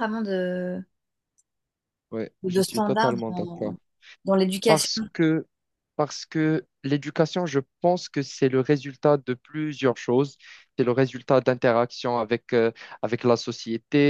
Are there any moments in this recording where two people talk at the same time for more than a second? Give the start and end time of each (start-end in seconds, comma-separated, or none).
2.4-3.7